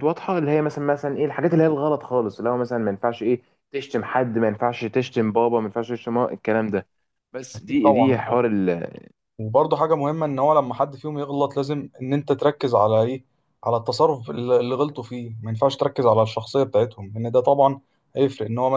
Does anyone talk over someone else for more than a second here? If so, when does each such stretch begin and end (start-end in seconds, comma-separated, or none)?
none